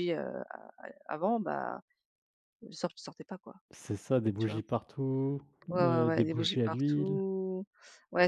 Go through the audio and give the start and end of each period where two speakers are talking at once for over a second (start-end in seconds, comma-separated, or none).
5.8-7.2